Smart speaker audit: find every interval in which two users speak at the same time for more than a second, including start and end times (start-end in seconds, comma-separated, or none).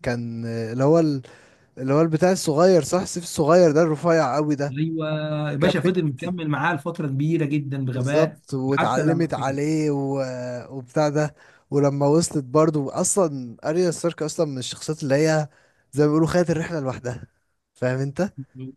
7.9-9.6